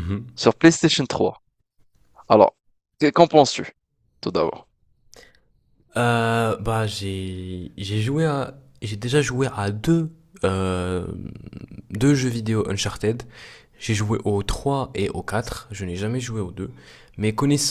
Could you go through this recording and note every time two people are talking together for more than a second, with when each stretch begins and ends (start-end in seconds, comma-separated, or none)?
none